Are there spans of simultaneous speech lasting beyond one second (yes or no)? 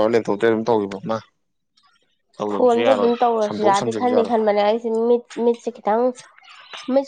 yes